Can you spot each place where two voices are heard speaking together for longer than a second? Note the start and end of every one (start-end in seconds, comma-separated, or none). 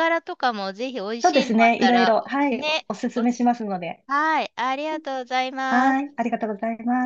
1.2-3.5